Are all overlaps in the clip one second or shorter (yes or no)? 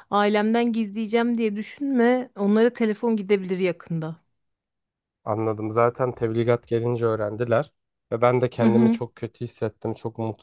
yes